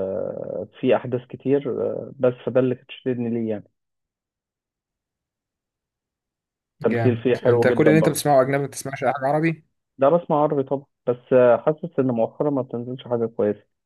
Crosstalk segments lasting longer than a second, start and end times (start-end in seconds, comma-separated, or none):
6.8-8.2